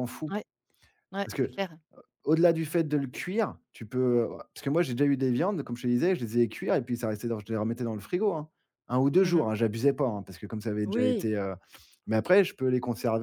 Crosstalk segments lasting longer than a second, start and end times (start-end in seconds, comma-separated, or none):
none